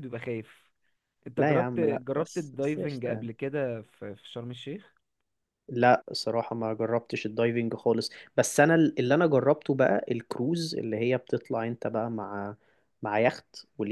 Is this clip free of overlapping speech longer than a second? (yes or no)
no